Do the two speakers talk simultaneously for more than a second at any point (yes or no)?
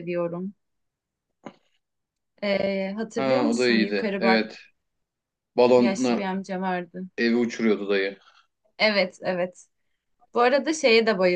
yes